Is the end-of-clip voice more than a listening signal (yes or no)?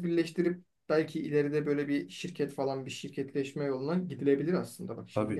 yes